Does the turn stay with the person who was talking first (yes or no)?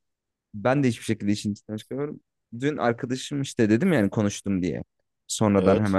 yes